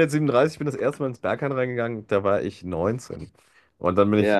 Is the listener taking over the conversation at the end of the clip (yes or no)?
yes